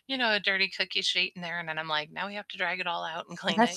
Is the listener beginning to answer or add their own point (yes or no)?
yes